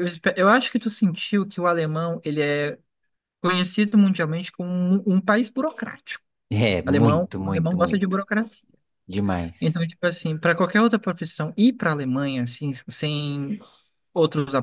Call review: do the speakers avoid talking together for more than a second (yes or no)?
no